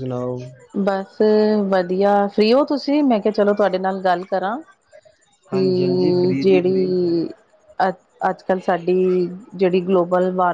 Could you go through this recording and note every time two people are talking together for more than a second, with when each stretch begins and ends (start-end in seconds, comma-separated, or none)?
5.5-6.9